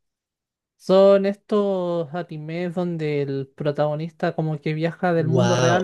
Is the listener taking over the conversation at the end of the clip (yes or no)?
yes